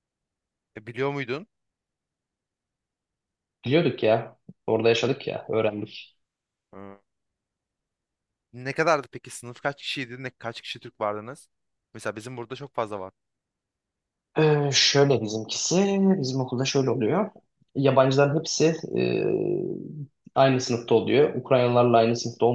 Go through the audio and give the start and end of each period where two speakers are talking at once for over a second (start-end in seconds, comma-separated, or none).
none